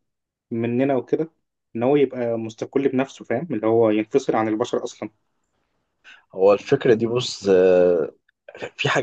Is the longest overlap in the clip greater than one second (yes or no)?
no